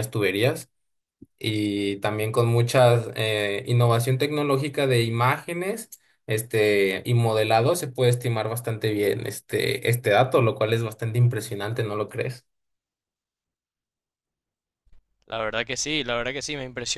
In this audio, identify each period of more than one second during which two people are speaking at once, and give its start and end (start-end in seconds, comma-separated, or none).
none